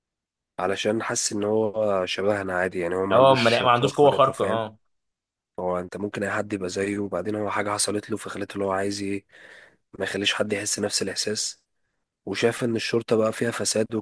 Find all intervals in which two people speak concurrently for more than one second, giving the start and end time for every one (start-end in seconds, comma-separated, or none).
3.1-4.6